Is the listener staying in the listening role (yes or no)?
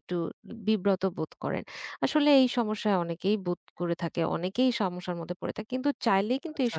yes